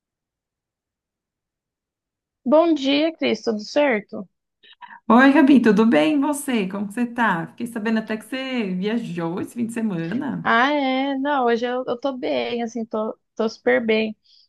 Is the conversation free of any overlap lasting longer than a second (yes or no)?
yes